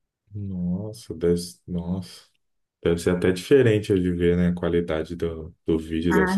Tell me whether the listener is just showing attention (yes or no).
no